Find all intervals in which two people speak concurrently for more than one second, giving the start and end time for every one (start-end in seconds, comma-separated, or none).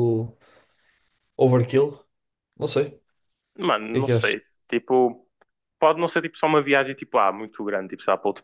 none